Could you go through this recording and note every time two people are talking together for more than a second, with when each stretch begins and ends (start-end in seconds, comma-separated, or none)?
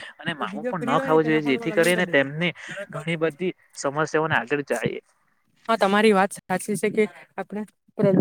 0.5-2.0